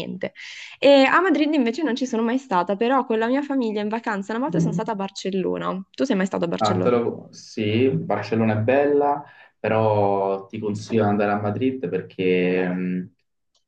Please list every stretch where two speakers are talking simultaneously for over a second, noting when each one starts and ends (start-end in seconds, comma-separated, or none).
none